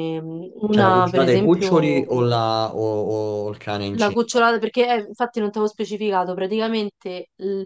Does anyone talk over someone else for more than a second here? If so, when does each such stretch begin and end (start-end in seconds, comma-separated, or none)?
0.7-2.3